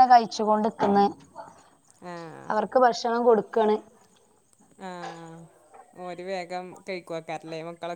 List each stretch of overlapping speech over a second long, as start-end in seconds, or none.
none